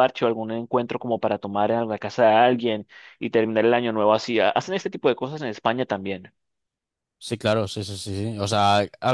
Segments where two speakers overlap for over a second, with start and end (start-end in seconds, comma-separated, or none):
none